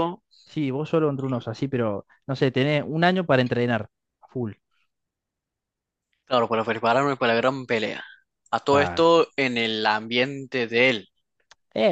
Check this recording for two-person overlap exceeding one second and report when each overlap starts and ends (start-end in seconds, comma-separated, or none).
none